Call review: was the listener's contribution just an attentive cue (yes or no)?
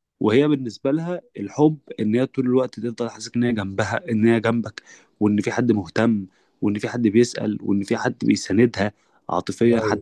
yes